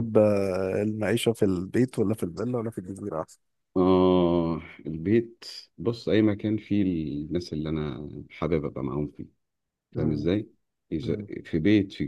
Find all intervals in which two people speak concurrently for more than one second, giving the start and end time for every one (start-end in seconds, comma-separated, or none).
none